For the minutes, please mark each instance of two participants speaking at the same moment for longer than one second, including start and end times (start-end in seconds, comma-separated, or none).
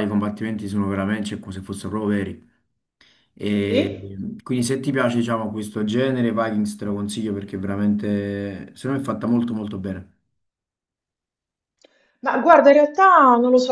none